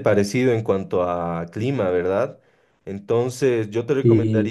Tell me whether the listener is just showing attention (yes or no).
yes